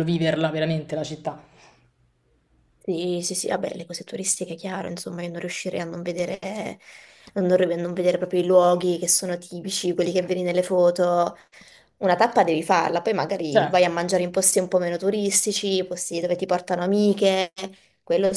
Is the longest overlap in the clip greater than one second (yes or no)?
no